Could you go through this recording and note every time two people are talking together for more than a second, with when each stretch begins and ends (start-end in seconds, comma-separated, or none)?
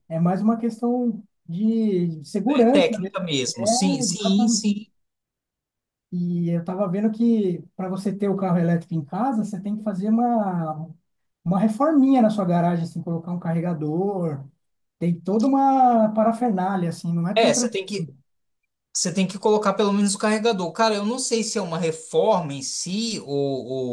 2.5-4.7